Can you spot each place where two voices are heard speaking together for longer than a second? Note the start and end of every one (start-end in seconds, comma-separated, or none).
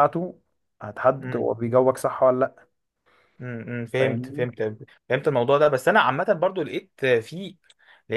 none